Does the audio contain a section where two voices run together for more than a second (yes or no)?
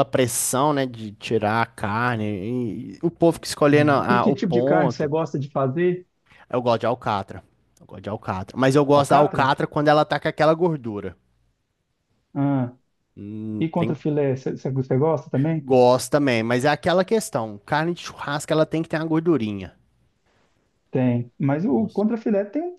yes